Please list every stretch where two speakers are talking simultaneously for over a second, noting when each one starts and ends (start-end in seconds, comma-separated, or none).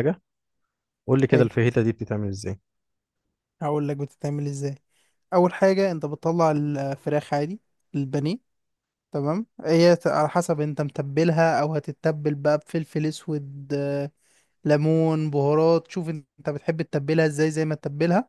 none